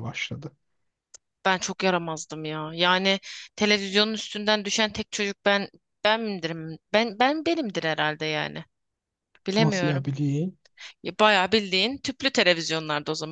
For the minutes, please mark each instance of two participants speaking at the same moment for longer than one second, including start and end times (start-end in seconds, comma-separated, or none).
none